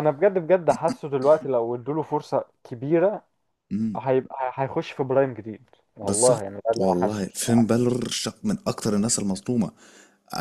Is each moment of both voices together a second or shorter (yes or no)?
no